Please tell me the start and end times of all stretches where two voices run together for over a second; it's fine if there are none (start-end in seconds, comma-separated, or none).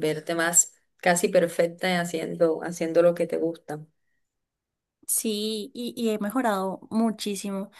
none